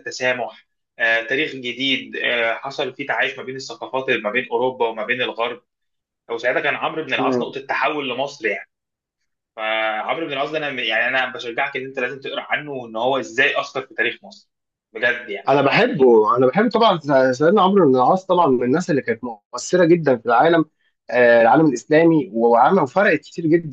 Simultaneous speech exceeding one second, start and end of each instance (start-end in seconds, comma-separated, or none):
none